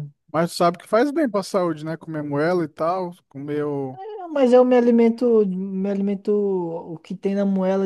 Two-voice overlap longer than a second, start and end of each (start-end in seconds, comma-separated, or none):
none